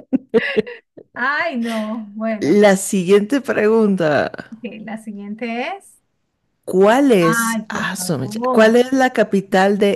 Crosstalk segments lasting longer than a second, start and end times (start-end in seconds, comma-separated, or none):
7.2-8.8